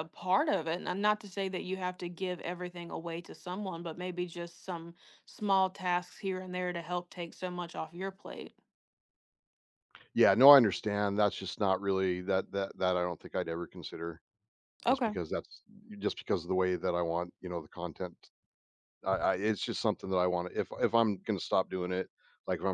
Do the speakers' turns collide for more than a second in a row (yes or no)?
no